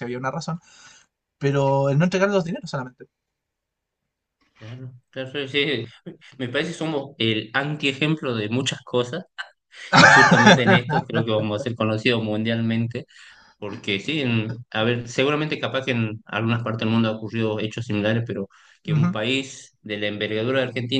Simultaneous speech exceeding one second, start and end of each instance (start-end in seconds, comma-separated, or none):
none